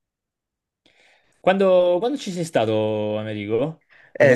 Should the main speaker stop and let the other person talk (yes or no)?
yes